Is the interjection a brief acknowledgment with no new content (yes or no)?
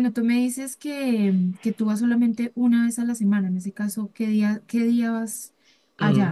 no